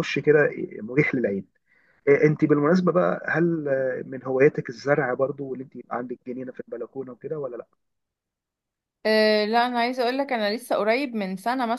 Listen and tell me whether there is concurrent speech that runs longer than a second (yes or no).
no